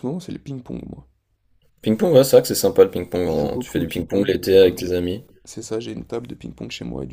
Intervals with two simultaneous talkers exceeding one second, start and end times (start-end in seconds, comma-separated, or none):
3.3-5.0